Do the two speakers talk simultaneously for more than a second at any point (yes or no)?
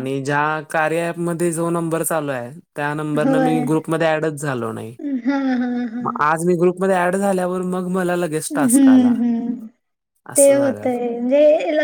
no